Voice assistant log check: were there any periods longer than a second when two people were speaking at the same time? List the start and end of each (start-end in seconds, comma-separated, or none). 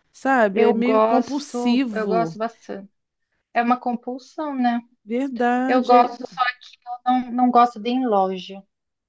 0.5-2.4